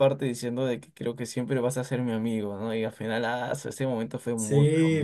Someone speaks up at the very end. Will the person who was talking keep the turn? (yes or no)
no